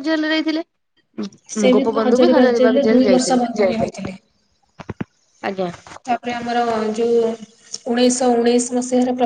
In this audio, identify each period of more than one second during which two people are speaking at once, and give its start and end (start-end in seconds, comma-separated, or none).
1.5-3.4